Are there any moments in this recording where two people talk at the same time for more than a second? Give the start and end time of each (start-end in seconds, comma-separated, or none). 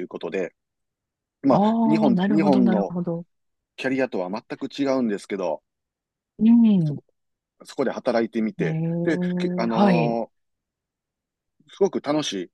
1.5-2.9, 8.6-10.2